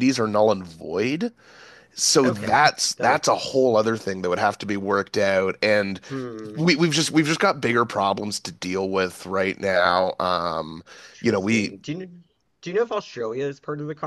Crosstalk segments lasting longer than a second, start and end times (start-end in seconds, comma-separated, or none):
2.2-3.7